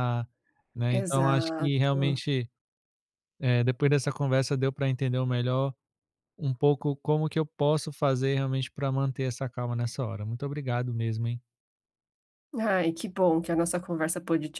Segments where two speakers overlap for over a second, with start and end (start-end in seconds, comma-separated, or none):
0.9-2.2